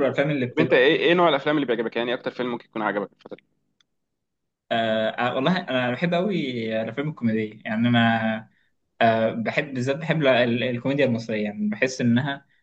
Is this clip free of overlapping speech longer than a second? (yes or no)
yes